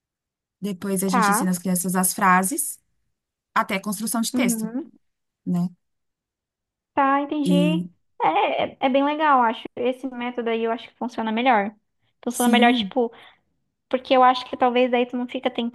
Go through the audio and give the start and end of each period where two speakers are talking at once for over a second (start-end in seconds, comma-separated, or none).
none